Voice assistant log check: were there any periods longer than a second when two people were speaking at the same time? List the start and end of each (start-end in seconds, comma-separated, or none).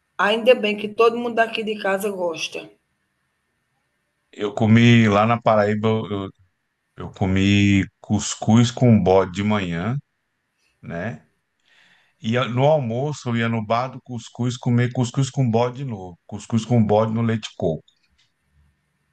none